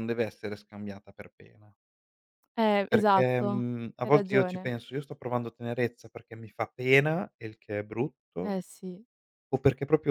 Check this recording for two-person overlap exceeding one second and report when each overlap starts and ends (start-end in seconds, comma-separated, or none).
2.9-4.7